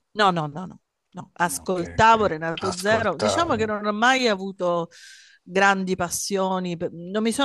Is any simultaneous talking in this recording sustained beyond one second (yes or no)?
yes